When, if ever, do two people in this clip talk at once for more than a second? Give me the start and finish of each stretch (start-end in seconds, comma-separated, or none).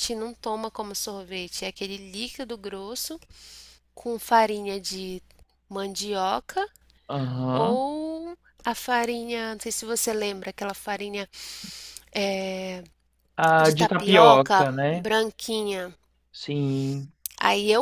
13.6-15.1